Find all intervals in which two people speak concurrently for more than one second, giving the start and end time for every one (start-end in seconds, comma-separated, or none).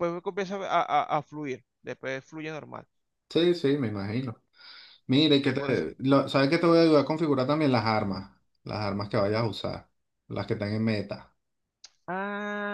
none